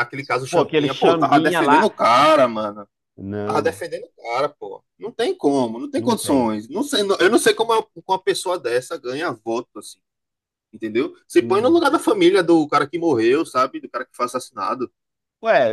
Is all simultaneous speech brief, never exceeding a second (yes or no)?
no